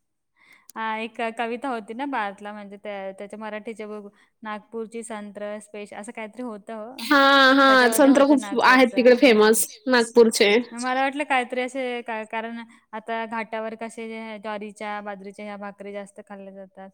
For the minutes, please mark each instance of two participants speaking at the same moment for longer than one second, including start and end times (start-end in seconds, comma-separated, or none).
7.7-9.4